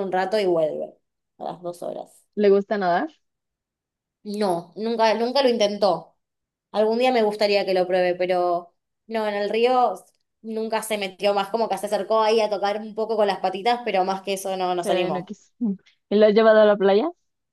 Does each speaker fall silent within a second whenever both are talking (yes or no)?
yes